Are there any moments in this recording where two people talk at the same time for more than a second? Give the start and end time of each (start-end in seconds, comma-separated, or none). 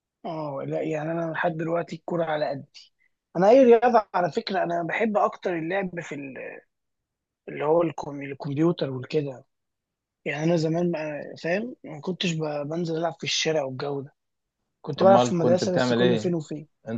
15.0-16.4